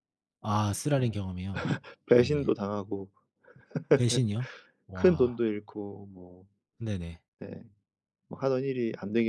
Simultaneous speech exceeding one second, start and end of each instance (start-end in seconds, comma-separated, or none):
none